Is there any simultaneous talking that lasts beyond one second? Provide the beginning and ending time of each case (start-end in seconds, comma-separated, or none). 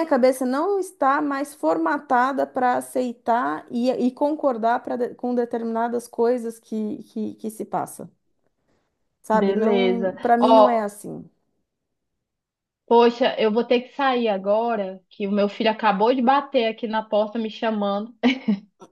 9.3-10.9